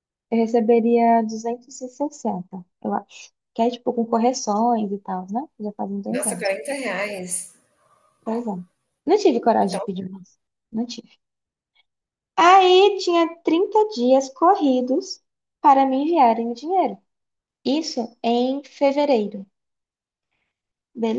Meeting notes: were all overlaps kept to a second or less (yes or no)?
yes